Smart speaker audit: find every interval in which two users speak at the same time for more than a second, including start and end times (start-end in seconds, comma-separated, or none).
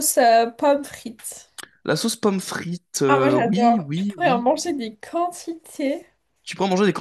3.1-4.5